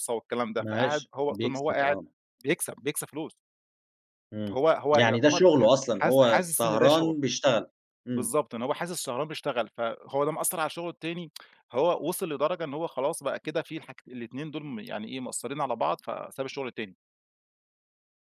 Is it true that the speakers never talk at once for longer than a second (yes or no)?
no